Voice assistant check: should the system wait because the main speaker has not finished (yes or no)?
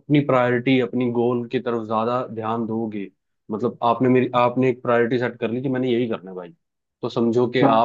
yes